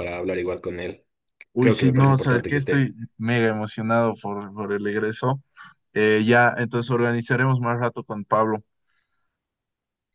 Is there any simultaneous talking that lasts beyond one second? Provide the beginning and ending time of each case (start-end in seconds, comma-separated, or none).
1.6-2.9